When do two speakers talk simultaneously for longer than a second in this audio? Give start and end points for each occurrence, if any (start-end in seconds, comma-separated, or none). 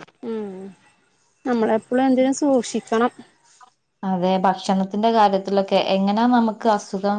none